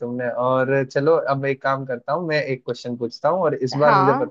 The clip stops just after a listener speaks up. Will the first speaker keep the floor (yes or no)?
yes